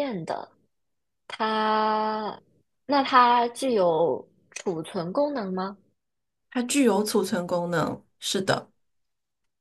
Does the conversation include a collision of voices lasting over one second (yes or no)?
no